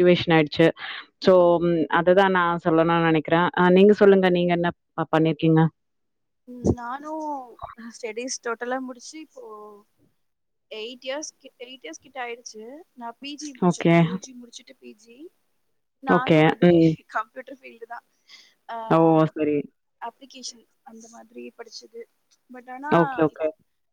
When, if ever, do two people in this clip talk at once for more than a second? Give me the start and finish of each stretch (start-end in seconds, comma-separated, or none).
none